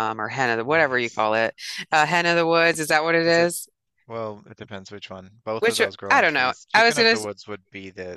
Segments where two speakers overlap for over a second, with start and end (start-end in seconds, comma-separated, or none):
5.6-7.2